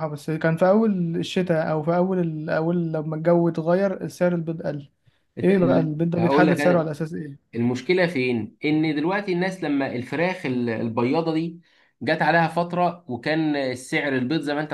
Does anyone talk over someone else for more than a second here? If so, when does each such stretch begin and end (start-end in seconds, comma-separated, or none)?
5.4-6.9